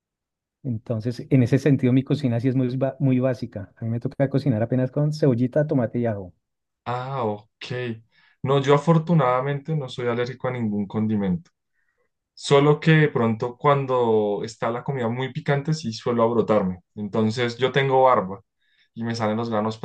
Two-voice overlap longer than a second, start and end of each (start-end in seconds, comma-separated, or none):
none